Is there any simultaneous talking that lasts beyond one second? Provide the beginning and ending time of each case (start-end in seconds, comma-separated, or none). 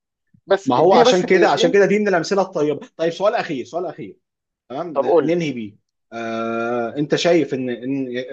0.6-1.9